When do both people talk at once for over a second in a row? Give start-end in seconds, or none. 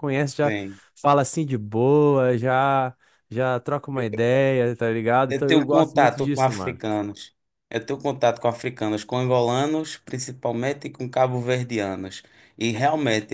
5.3-6.8